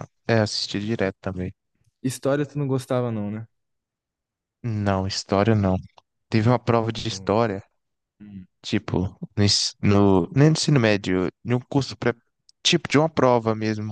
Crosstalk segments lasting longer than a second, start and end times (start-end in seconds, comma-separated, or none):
none